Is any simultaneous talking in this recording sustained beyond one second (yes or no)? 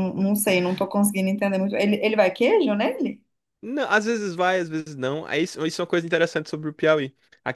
no